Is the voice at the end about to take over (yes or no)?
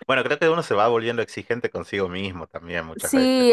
yes